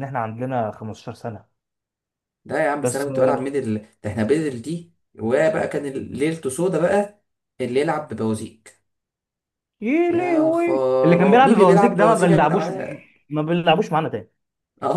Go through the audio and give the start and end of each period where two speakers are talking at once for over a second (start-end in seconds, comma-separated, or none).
10.1-12.7